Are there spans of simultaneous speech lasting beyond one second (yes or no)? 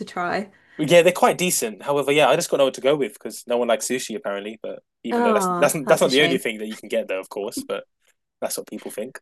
yes